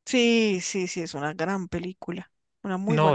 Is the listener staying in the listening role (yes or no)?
no